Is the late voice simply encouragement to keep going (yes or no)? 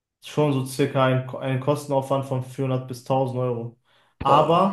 yes